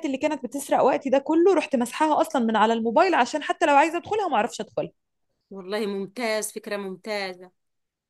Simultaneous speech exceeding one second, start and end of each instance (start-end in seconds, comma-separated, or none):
none